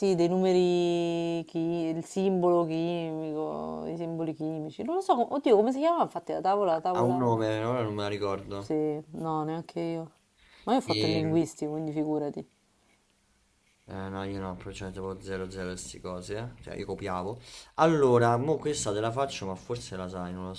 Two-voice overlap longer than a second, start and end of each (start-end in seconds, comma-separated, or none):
none